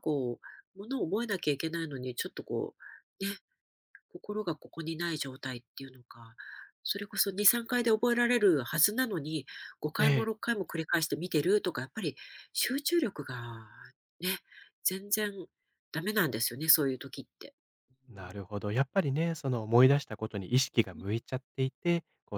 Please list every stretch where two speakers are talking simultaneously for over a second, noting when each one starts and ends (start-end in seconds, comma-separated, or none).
none